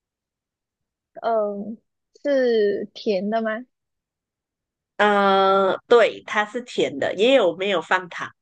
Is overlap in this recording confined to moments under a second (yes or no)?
yes